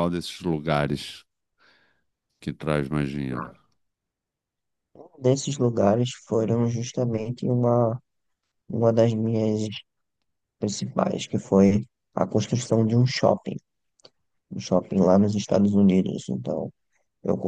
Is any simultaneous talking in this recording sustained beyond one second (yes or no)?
no